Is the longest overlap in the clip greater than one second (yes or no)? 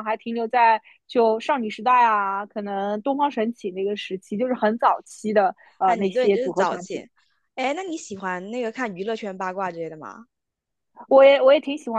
yes